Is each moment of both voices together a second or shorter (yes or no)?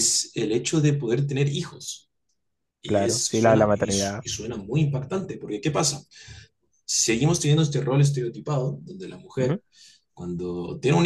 no